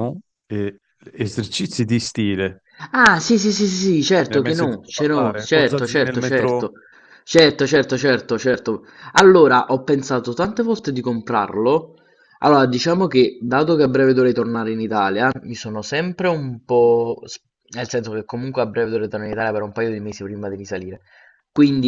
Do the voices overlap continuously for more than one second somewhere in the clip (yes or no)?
yes